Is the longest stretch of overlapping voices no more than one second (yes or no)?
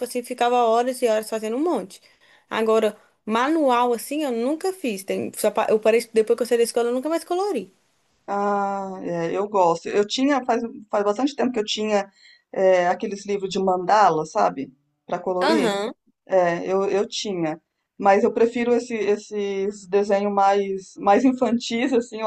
yes